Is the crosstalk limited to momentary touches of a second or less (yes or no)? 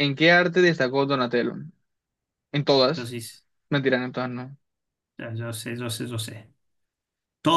yes